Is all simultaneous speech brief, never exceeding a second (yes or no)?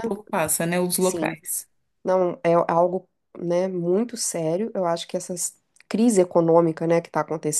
yes